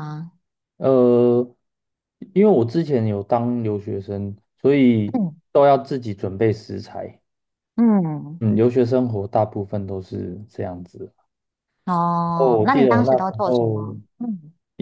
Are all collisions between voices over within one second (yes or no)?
no